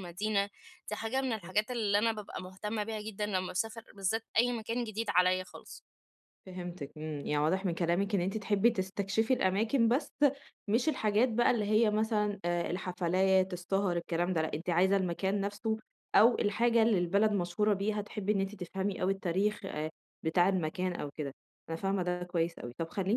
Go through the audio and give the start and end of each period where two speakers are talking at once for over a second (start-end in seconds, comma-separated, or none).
none